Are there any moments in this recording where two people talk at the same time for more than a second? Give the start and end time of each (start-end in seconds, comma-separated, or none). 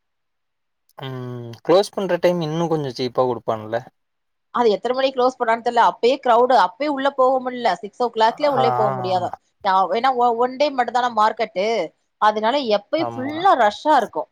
none